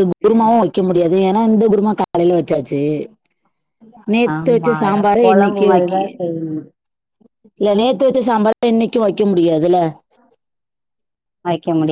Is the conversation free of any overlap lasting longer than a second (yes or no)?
no